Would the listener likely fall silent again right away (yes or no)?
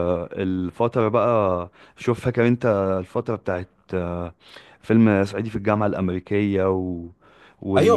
no